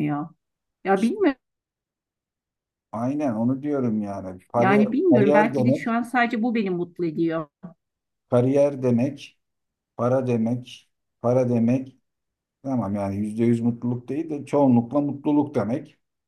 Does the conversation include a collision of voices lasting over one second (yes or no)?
yes